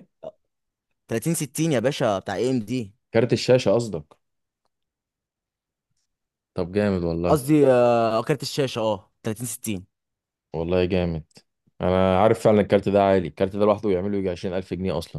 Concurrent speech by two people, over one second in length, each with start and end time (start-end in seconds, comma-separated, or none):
none